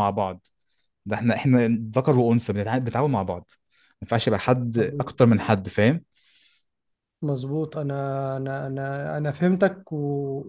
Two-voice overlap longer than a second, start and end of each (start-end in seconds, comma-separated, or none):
none